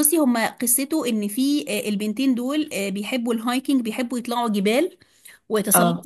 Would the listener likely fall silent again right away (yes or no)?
yes